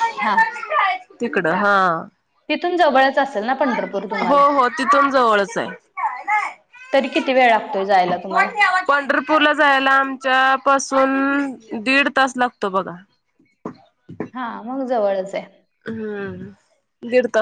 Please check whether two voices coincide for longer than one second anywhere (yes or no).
no